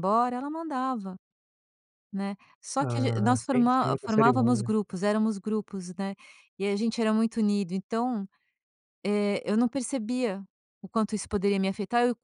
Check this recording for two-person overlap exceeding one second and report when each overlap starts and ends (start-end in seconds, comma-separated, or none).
2.8-4.7